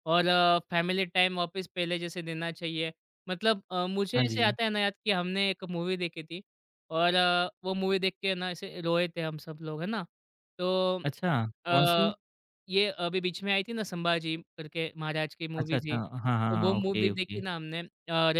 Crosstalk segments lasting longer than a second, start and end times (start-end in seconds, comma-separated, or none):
15.6-17.4